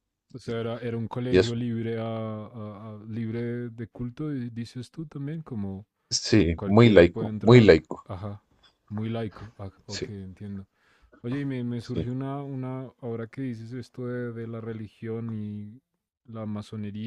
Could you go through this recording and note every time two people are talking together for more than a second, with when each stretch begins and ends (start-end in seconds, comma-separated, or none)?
6.5-8.1